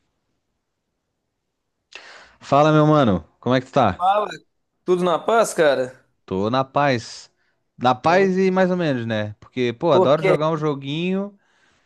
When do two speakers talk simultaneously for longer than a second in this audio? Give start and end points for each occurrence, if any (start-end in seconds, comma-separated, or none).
none